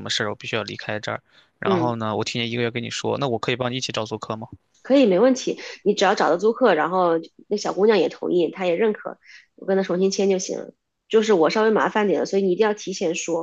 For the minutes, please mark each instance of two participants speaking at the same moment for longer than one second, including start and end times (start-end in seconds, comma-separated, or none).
none